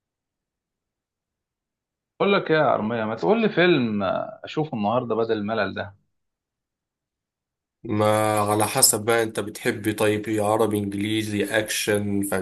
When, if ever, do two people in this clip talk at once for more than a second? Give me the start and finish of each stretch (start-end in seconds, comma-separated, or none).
none